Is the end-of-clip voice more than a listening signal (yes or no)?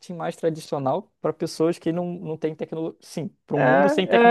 yes